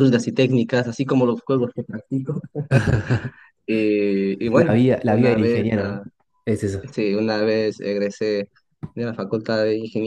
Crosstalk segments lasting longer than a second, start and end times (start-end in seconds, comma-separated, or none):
4.5-6.0